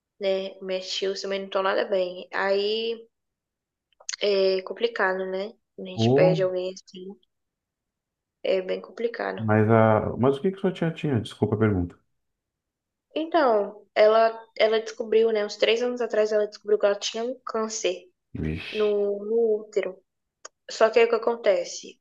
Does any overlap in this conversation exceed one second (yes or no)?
no